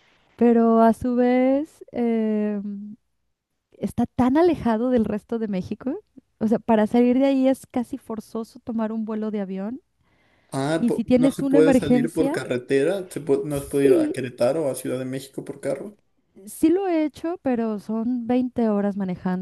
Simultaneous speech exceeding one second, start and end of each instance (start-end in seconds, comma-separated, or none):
10.8-12.4